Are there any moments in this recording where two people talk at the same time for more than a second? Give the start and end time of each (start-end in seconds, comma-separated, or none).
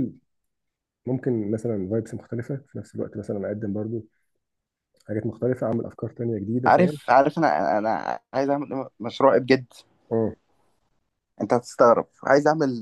none